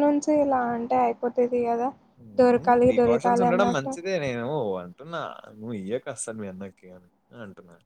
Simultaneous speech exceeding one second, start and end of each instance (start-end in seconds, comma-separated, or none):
2.4-3.9